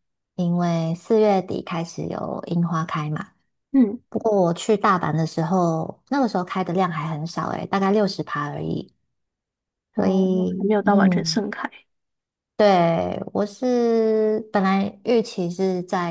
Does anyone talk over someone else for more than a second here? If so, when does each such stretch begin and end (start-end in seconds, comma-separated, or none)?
9.9-11.4